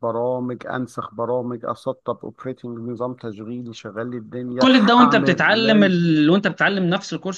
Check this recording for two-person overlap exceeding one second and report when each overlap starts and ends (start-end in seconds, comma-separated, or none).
4.6-5.9